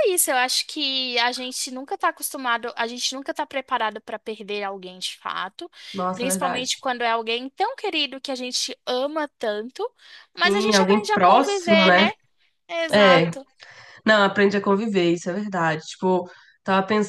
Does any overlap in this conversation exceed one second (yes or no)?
yes